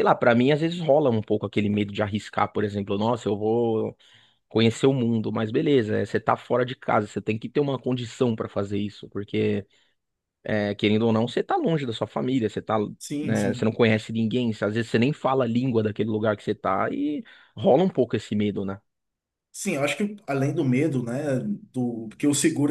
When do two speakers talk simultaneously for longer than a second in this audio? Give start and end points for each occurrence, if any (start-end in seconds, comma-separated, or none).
none